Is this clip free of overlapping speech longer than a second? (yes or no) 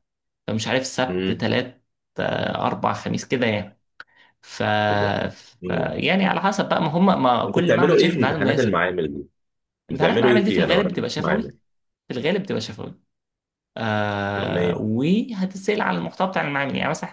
no